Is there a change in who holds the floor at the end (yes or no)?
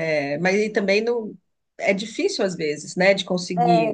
yes